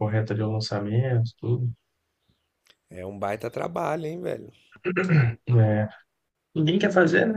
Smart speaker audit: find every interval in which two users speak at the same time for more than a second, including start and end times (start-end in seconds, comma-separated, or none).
none